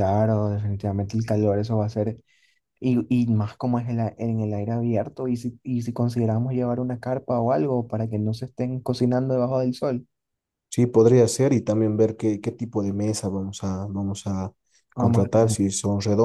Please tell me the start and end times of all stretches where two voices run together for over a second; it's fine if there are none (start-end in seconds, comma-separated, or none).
none